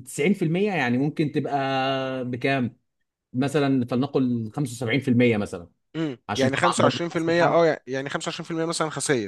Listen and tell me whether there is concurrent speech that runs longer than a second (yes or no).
yes